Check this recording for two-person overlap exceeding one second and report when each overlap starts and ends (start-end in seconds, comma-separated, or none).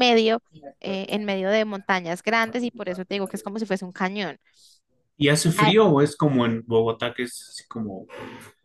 none